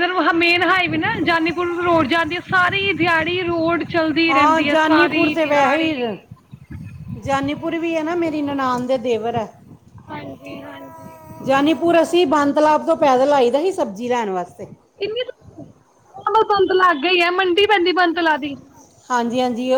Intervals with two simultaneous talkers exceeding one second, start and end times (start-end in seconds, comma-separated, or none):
4.3-5.9